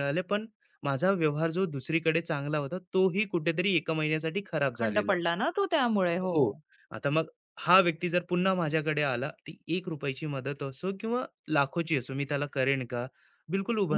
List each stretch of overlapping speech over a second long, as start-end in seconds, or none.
none